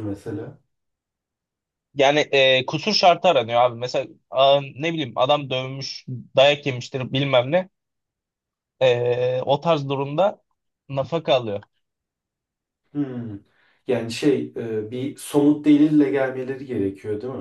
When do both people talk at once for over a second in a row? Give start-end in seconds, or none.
none